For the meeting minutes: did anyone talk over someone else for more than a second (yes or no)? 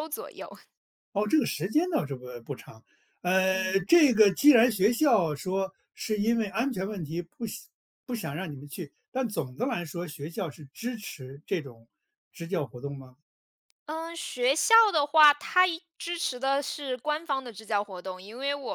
no